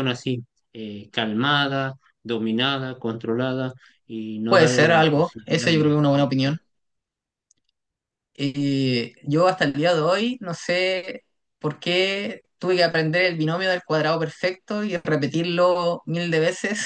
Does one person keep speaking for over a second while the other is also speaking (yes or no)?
yes